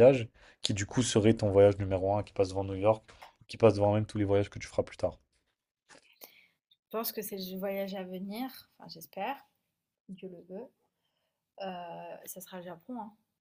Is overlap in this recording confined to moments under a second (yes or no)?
yes